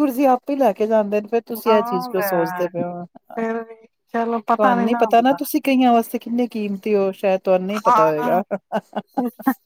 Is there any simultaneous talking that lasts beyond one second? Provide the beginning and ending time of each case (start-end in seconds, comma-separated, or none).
1.7-3.0